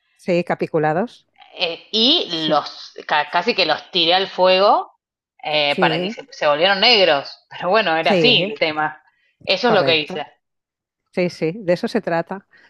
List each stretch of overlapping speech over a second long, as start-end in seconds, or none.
none